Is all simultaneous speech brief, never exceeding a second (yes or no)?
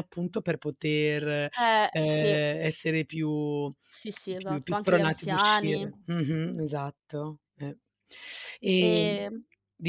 no